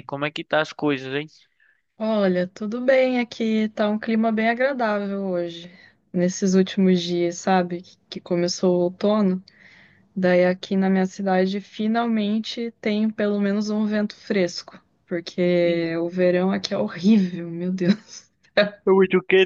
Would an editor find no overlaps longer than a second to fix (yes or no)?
yes